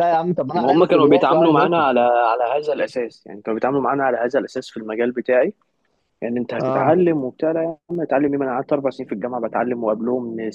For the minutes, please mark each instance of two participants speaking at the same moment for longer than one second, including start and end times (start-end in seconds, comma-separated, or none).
0.6-1.9